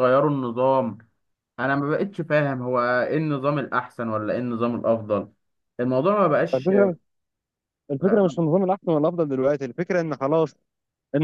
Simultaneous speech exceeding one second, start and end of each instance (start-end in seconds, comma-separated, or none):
none